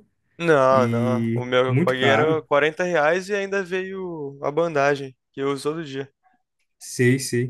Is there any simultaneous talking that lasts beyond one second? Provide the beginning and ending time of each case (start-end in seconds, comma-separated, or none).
0.7-2.5